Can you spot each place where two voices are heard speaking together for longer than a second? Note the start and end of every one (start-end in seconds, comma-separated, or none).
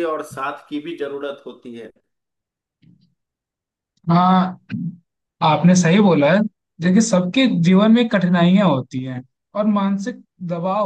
none